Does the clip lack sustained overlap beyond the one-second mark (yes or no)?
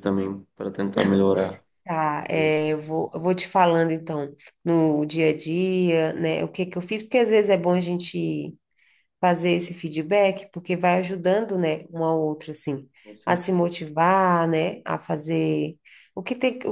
yes